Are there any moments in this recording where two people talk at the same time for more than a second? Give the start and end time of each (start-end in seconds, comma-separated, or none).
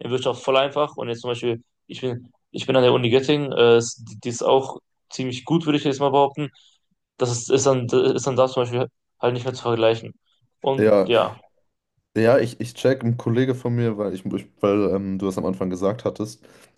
none